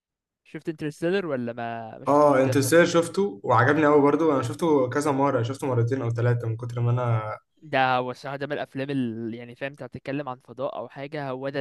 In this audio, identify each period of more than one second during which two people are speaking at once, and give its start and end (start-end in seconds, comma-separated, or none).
none